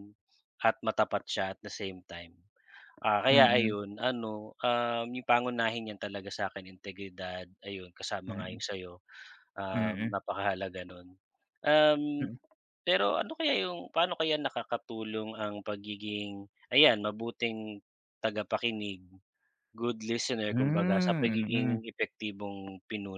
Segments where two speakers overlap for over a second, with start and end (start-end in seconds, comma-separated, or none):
20.5-21.8